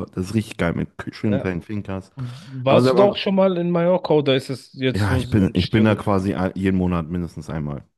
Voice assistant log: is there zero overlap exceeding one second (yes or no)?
no